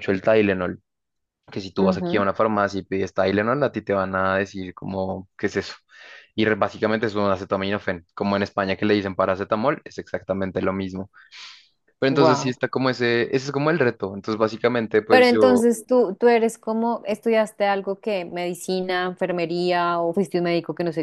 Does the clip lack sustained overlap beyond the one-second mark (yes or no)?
yes